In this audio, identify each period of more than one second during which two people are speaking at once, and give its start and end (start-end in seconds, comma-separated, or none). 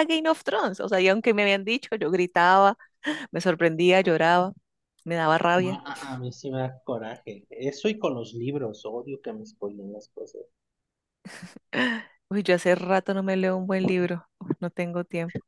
none